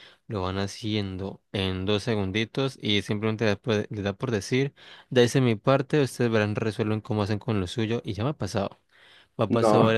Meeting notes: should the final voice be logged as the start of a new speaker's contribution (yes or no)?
no